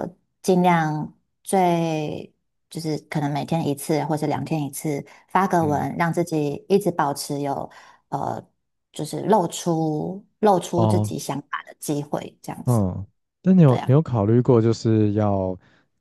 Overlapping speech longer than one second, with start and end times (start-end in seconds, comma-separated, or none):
none